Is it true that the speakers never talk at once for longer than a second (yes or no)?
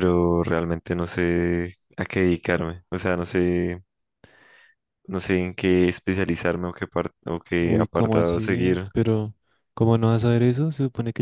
no